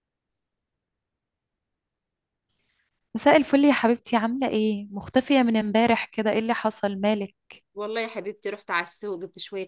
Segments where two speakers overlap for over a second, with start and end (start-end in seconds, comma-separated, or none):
none